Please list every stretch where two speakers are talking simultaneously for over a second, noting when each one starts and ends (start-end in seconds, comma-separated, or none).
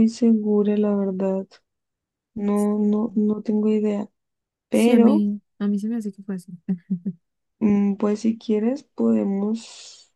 none